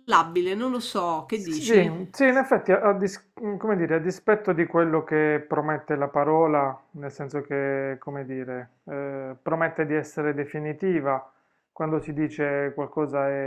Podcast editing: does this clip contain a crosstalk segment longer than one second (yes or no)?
no